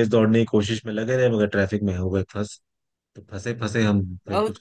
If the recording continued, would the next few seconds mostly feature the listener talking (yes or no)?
yes